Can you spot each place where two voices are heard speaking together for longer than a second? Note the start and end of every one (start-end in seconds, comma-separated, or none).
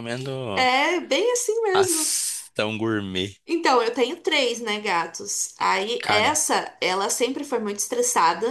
none